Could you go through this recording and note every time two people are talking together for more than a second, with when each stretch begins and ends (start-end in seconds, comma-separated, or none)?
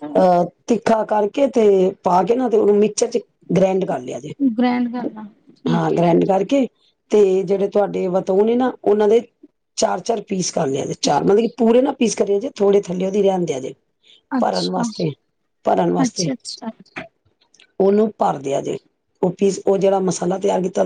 none